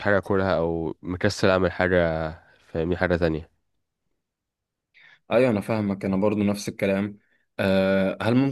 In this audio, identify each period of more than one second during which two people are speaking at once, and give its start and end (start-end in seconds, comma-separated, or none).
none